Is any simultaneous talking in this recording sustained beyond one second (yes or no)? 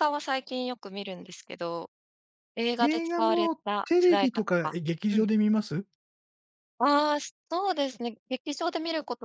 yes